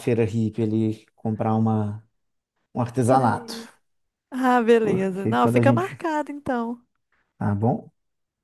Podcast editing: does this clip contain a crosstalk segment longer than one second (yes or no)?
yes